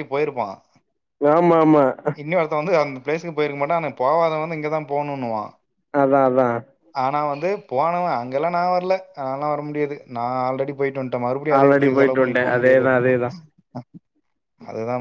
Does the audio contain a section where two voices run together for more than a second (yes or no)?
yes